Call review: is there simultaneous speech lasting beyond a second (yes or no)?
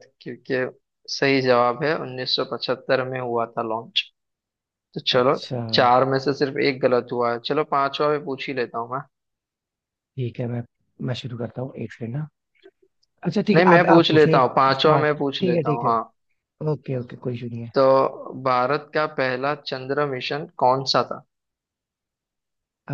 yes